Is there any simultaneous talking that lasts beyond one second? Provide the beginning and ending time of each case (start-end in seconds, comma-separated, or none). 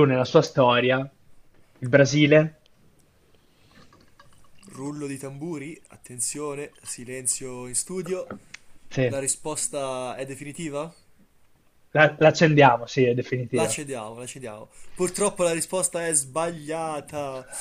none